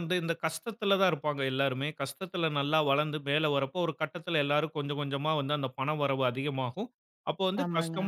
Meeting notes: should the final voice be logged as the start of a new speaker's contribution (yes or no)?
no